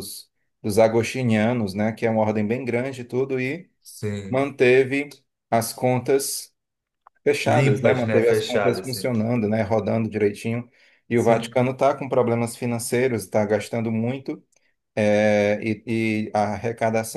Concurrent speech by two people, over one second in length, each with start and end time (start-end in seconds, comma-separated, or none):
7.4-9.1